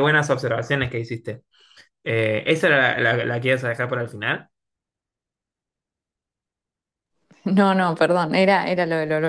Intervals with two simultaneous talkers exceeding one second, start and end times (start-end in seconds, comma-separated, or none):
none